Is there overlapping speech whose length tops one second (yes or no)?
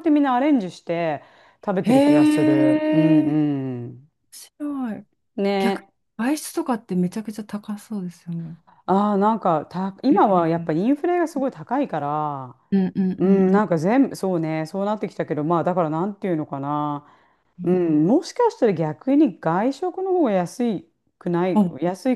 yes